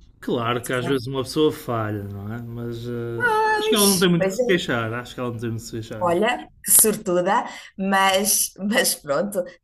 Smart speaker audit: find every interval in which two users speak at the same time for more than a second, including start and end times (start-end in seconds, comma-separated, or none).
3.4-4.7